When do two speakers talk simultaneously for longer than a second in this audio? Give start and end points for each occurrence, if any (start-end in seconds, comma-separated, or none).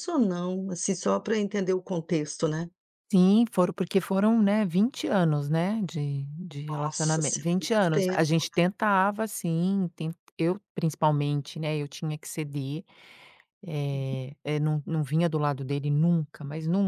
6.7-8.8